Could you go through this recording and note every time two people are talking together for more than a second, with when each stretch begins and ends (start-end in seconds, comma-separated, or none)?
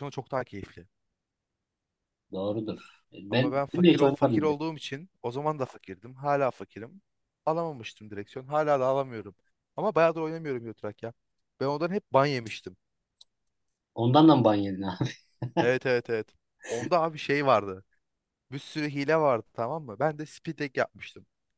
3.3-4.5